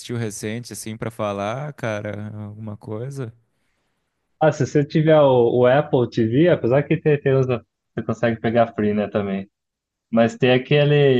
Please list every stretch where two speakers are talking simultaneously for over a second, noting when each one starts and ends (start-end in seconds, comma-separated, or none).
none